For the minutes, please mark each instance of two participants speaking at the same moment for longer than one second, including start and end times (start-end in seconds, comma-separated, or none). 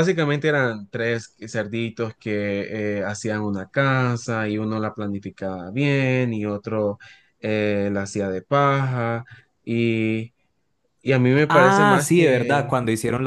11.5-12.8